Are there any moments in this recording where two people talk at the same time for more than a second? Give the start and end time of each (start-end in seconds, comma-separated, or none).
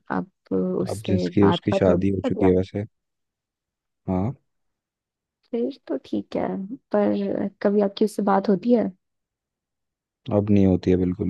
0.9-2.6